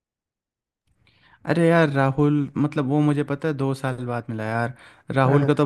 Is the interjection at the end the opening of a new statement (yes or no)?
no